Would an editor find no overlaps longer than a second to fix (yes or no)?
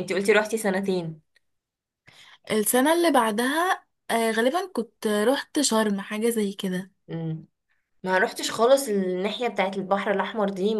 yes